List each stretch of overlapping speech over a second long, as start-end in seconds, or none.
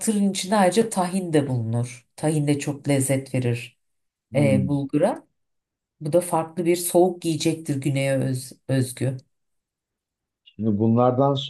none